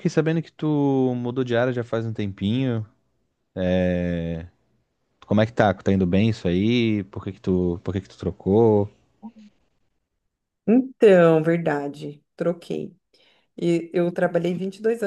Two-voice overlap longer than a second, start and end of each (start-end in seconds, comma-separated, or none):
none